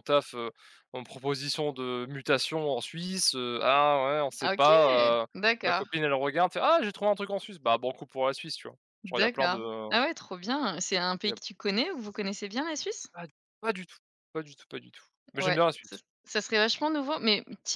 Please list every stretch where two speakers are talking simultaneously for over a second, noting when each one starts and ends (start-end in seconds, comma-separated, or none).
none